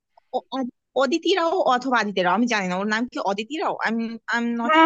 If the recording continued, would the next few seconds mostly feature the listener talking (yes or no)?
yes